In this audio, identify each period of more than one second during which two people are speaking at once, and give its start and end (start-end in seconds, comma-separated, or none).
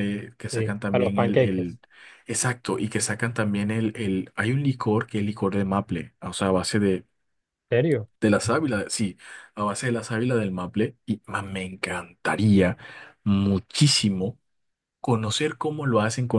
0.5-1.8